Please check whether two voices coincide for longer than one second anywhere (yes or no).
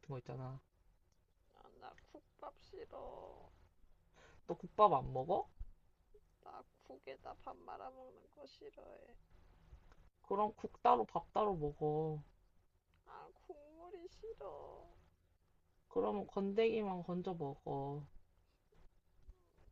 no